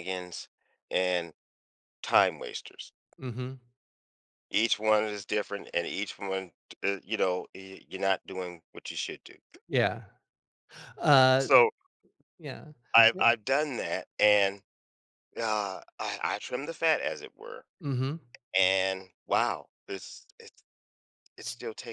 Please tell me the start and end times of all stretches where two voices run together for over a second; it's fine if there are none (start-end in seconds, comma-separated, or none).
none